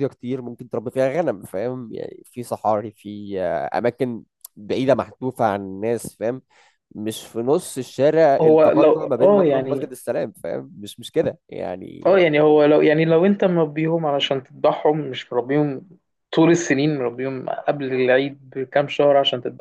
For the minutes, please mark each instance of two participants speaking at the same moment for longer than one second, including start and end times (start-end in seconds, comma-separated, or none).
8.4-9.8